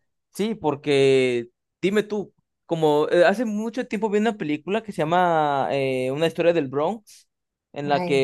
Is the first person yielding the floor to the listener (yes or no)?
no